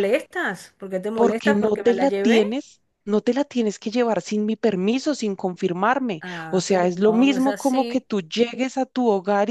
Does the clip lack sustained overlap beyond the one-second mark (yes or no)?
no